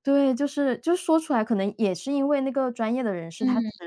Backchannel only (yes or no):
yes